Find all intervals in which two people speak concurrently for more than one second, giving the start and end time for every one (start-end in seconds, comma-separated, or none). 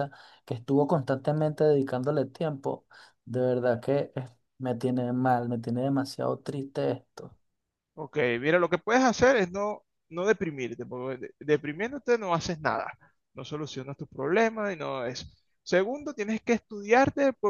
none